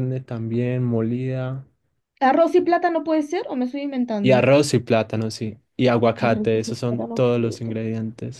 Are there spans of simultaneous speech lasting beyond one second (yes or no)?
yes